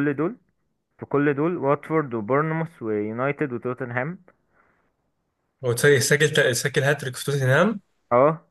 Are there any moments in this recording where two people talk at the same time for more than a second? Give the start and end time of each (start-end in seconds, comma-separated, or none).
none